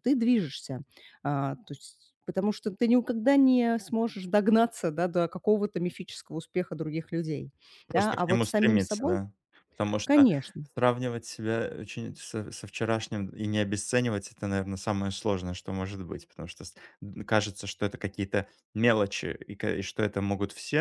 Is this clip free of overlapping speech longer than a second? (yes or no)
no